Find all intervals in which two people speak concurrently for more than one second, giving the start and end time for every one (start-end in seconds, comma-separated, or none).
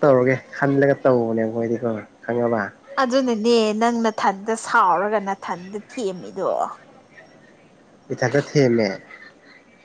none